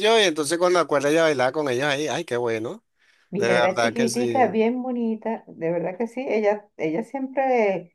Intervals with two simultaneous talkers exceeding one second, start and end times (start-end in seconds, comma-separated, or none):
3.4-4.6